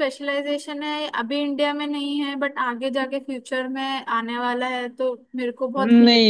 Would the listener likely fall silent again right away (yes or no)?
no